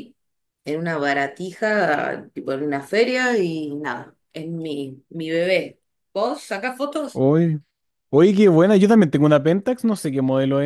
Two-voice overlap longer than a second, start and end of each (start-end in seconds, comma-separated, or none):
none